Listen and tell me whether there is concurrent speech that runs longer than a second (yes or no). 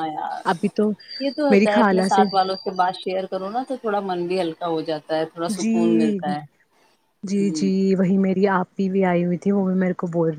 no